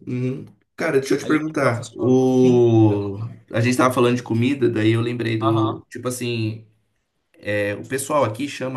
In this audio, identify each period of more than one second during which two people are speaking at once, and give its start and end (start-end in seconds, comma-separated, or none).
1.2-2.7